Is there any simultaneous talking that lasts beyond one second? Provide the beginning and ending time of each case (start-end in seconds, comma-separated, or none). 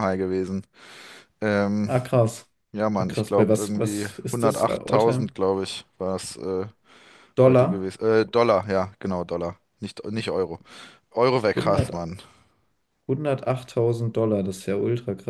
3.0-5.3